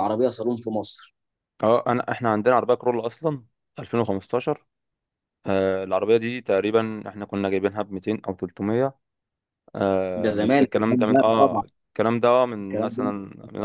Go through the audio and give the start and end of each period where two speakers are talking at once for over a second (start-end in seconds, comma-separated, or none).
10.2-11.6